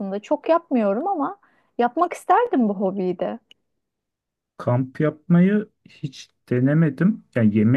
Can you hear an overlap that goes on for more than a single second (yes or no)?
no